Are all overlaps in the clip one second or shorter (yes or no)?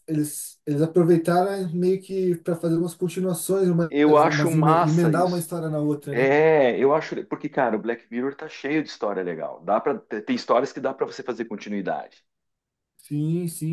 no